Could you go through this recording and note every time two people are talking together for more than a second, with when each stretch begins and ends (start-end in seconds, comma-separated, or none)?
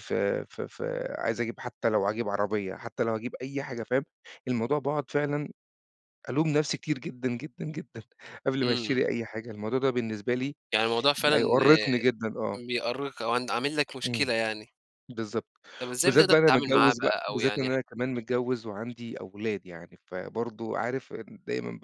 16.0-17.8